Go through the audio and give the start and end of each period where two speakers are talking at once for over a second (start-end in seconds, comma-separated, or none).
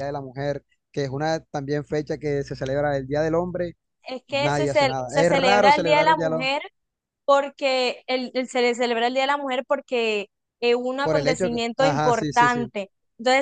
4.3-6.6, 11.0-12.6